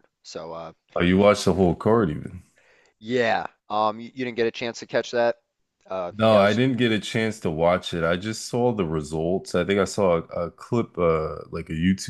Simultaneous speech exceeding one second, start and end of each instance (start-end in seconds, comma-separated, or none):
none